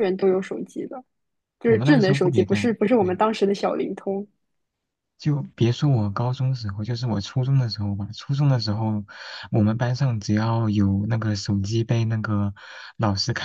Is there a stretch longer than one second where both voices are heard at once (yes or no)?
yes